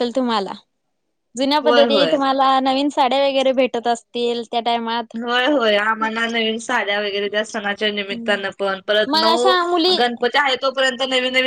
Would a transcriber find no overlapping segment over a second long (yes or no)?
yes